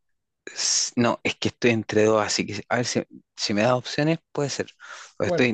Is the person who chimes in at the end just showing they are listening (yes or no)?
yes